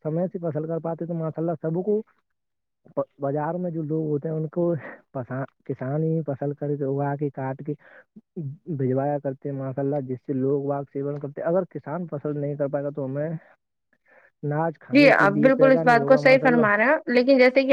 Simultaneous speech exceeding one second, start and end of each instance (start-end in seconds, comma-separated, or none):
14.9-16.7